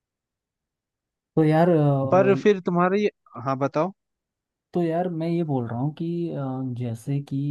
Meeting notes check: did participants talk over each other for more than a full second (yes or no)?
no